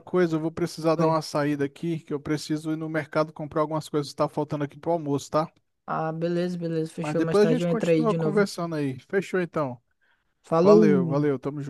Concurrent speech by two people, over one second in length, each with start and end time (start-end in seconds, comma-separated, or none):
7.0-8.4